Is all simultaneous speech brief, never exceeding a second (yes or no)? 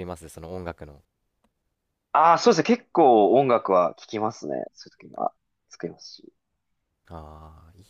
yes